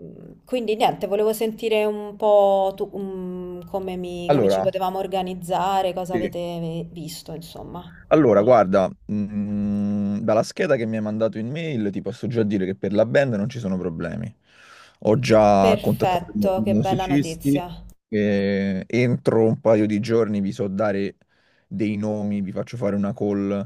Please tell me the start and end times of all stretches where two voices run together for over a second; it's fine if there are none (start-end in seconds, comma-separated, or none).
15.6-17.7